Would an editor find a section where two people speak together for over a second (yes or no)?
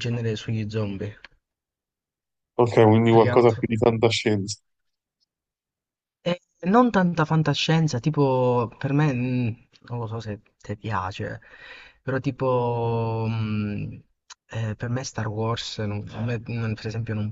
no